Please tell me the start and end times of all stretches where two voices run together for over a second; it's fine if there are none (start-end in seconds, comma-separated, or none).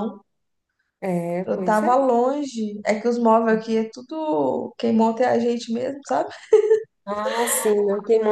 none